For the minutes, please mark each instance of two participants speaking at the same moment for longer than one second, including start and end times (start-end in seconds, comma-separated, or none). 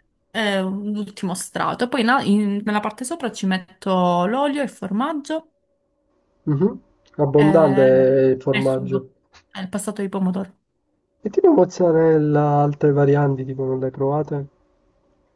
none